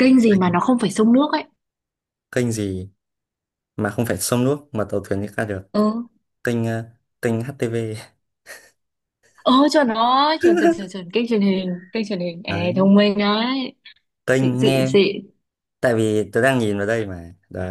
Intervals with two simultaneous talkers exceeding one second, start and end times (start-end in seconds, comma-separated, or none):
none